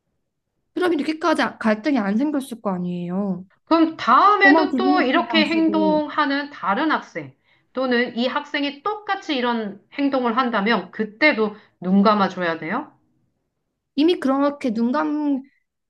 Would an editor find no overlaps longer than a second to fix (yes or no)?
no